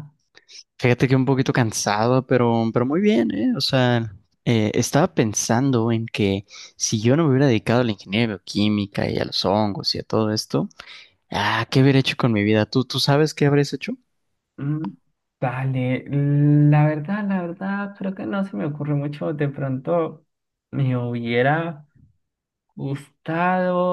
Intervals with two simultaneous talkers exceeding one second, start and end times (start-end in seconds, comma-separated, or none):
none